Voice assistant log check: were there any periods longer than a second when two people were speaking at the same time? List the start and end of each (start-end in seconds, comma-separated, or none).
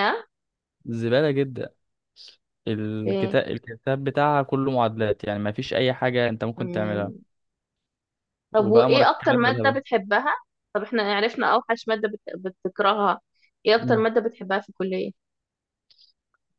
8.6-9.8